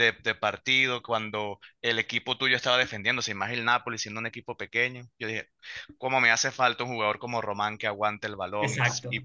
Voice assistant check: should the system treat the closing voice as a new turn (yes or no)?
no